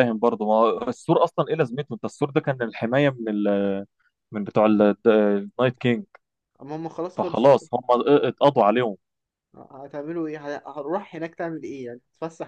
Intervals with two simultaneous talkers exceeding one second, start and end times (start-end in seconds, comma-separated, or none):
none